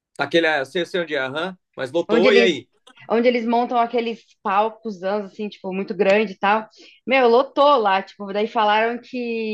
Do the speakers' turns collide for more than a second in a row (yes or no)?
no